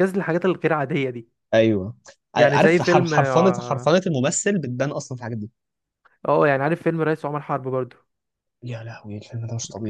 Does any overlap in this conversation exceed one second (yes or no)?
yes